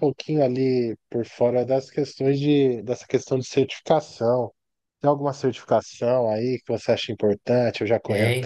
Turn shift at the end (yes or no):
yes